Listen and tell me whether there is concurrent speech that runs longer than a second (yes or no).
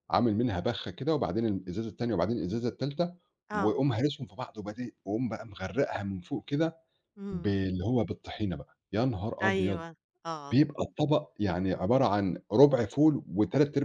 no